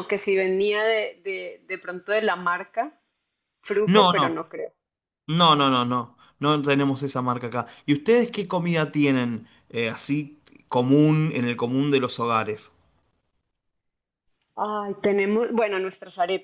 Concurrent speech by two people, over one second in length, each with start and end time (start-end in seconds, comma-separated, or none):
none